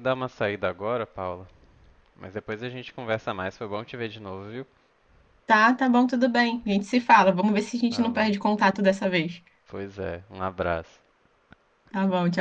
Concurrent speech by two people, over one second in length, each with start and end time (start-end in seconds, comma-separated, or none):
none